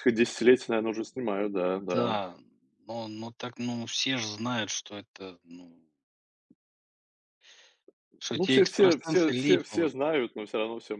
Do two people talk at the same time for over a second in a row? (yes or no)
yes